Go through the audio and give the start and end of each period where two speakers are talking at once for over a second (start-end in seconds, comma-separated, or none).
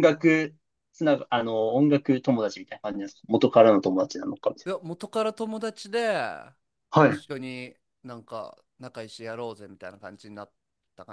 none